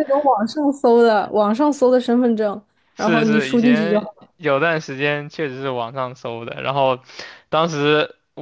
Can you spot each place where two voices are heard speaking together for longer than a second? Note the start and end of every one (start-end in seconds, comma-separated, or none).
2.9-4.3